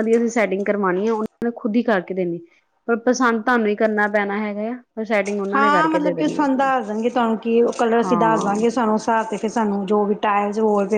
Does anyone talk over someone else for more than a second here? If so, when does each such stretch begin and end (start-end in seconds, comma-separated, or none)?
none